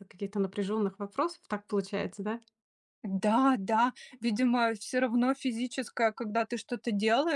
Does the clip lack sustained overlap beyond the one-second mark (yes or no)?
yes